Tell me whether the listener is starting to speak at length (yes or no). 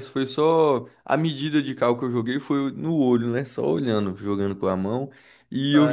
no